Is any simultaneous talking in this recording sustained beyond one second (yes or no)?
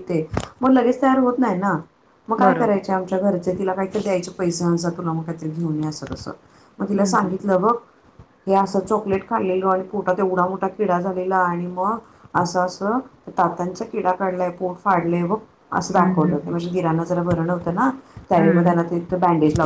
no